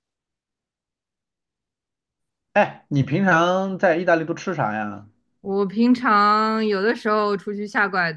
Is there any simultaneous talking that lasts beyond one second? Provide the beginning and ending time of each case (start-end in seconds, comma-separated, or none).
none